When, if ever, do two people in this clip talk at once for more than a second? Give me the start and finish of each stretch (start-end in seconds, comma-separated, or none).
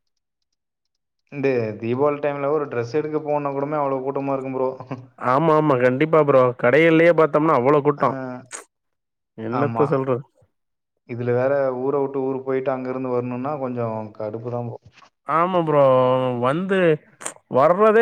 none